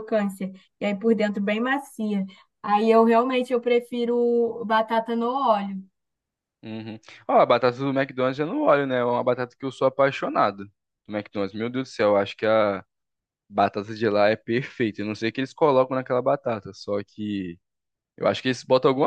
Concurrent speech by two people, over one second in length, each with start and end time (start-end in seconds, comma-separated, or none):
none